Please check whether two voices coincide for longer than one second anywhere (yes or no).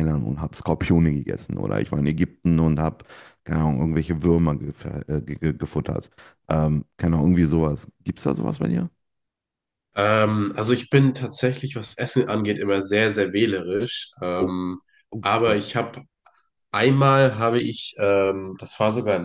no